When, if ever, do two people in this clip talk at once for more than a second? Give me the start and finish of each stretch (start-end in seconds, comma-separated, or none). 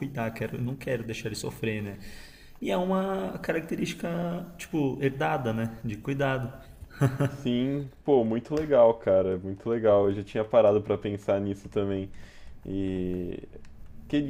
none